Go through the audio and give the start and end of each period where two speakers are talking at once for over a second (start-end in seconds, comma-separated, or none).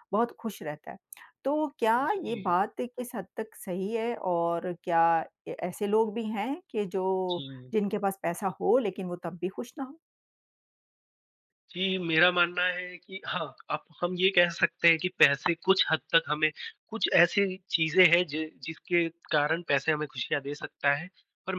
none